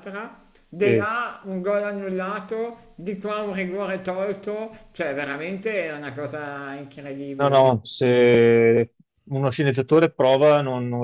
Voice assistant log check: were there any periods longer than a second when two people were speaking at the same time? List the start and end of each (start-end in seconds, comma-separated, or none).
none